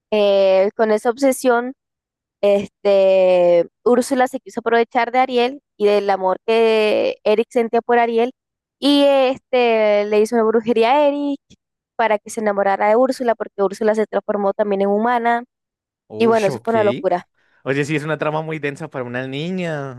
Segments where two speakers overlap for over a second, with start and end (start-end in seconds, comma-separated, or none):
none